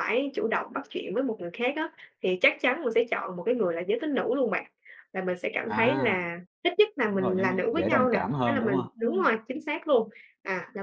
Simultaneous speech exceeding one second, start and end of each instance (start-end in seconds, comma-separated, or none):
7.1-9.3